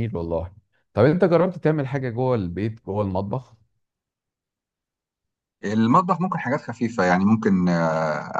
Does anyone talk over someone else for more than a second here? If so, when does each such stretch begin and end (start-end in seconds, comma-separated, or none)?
none